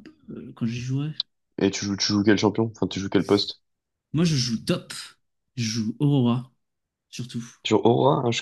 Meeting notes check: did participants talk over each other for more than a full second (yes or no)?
no